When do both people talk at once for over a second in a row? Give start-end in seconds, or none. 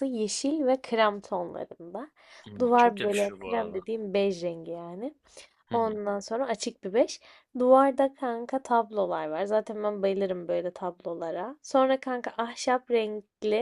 2.6-3.8